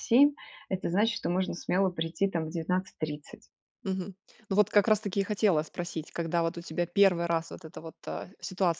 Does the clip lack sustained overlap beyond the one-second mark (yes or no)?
yes